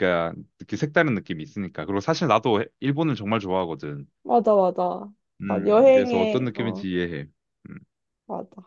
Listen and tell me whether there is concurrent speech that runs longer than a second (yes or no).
yes